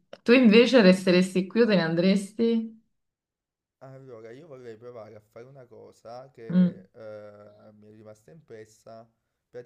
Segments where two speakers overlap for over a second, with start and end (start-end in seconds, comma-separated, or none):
none